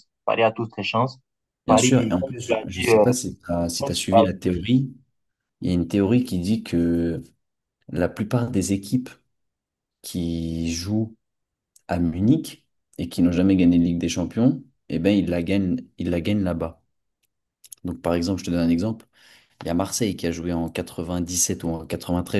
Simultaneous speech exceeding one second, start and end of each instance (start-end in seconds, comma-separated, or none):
1.7-3.0